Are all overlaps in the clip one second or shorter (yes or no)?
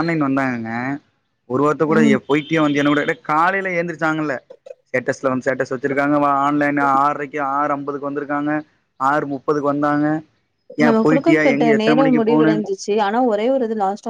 no